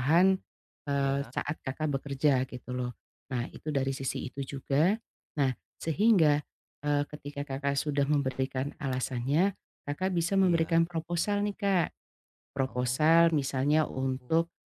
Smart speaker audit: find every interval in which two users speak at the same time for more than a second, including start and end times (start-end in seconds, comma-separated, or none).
12.7-14.1